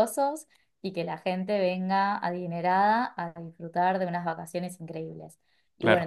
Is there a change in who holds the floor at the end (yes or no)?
no